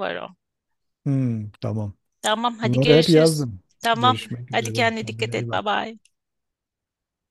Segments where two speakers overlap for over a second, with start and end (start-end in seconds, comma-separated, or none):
2.6-5.8